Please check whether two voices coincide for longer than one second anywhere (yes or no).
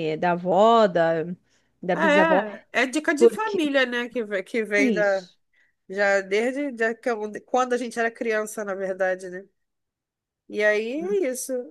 no